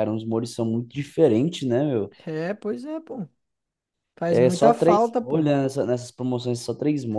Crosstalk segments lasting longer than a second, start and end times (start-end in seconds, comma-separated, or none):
4.3-5.5